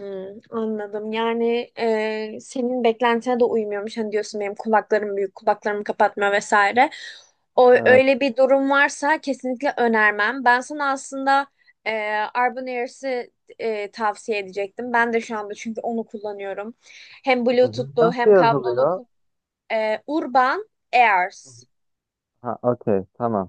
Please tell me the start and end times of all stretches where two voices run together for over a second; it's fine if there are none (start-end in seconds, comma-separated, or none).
17.6-19.0